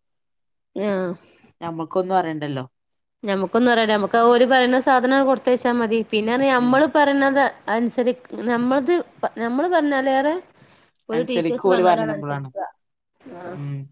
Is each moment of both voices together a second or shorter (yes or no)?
no